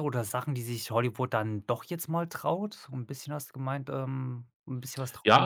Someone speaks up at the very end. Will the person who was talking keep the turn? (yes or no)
no